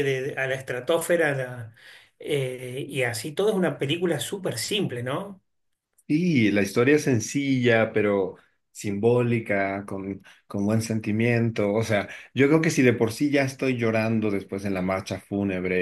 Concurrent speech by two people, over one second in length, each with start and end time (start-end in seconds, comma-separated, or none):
none